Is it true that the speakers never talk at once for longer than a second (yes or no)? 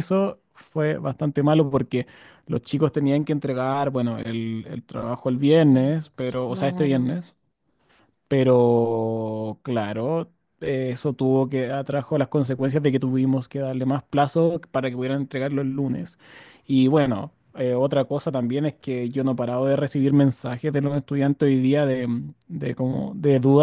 no